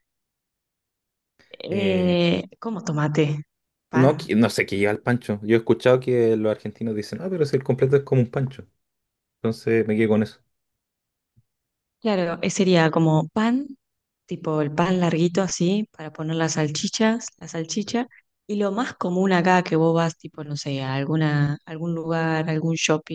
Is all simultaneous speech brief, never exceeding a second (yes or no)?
yes